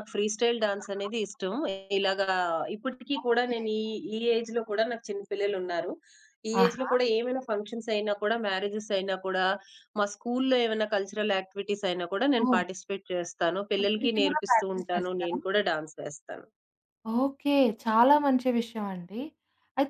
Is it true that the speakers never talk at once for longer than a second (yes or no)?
no